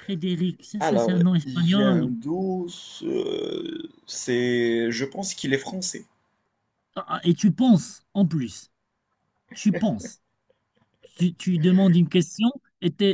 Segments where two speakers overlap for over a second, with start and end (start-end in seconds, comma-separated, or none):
0.8-2.2